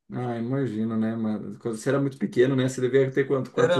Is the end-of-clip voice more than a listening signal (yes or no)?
yes